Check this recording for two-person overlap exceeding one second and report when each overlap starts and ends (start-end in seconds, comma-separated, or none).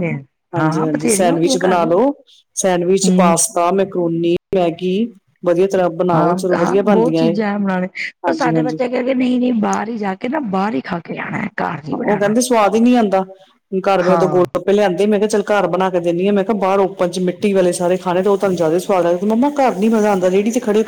0.6-1.9